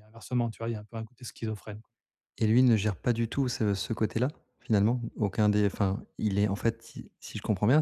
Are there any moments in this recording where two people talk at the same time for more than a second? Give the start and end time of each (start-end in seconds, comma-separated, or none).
none